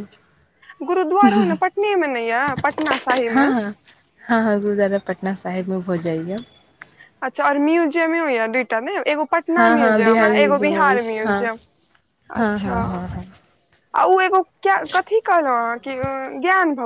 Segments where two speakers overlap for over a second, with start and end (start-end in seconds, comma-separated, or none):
9.6-11.4